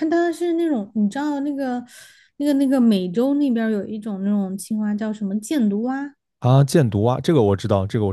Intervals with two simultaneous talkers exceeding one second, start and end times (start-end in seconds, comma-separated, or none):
none